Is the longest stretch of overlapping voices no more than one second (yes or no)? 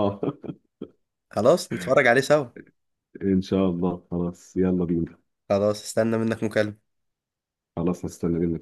yes